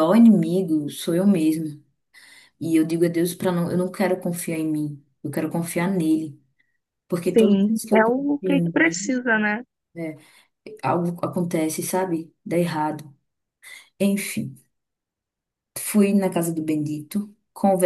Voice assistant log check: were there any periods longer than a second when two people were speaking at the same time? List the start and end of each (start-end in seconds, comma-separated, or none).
7.3-9.2